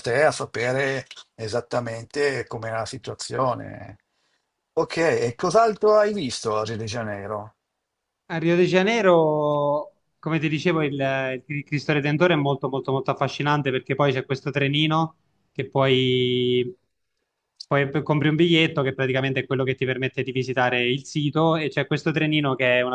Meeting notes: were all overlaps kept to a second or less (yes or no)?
yes